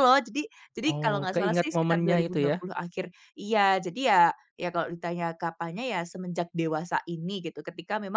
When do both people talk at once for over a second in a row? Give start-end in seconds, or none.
0.9-2.6